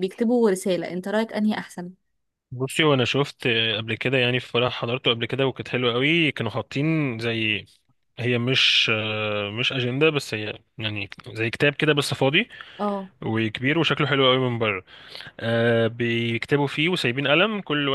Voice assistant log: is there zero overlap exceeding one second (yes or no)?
yes